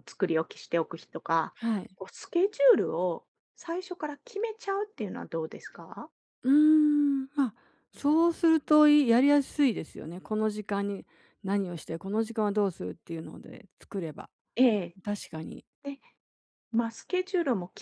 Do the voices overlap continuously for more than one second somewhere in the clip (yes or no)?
no